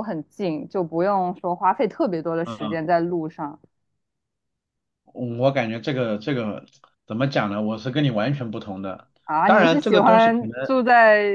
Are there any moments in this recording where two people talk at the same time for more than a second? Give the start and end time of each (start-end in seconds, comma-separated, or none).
9.2-10.5